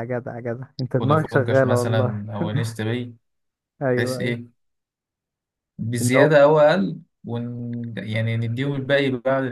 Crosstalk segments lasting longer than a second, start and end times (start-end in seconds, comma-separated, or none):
0.9-2.2